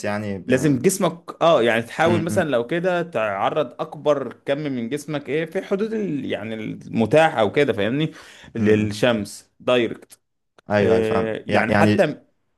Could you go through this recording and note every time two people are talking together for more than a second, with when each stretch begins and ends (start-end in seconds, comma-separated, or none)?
10.8-12.1